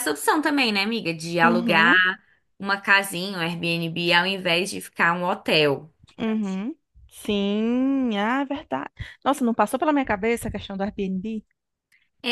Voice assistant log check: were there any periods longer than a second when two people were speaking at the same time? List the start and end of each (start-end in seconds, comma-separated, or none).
none